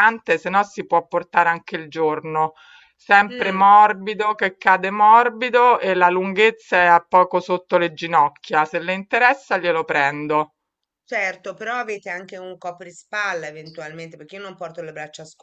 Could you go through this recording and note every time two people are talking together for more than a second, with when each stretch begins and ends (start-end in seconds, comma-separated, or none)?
none